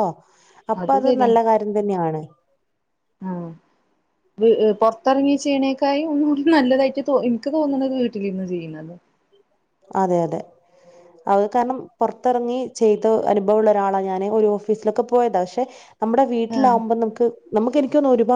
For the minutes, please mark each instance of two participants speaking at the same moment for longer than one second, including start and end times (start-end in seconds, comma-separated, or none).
none